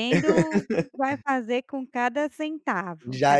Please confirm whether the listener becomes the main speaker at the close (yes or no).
yes